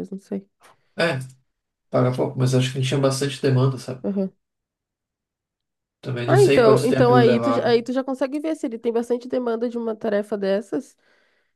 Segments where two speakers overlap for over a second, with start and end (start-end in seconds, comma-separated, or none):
6.2-7.8